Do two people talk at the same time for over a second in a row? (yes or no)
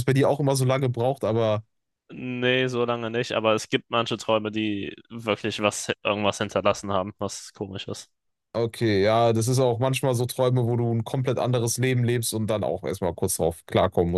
no